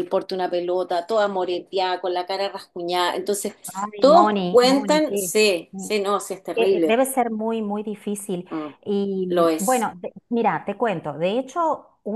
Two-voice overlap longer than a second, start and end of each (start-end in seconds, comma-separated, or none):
4.0-5.3